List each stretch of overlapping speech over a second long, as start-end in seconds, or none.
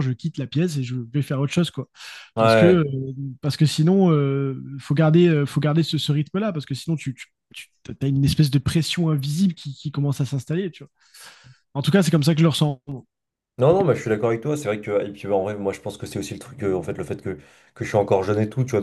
none